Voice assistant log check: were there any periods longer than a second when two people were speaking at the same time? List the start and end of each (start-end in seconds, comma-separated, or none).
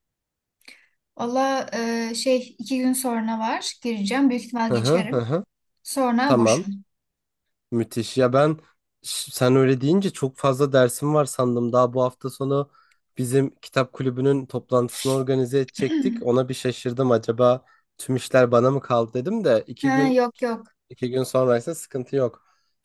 none